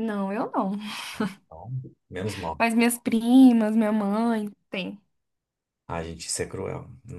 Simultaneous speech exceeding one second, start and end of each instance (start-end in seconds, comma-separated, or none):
none